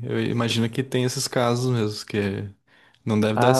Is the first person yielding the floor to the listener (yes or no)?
yes